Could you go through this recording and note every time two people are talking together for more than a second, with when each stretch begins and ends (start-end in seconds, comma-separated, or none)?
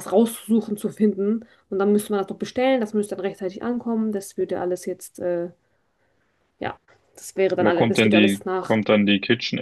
7.6-8.8